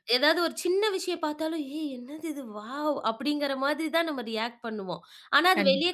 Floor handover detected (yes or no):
no